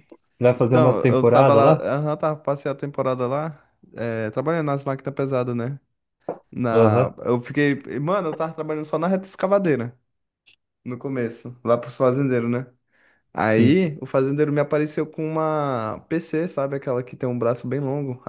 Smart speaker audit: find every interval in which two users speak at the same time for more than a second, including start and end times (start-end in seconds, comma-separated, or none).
0.6-1.9